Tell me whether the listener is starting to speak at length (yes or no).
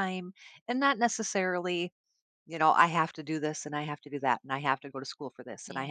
no